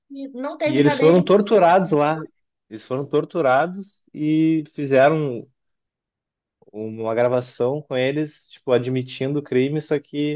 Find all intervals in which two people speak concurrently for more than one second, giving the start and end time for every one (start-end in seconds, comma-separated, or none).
0.6-2.0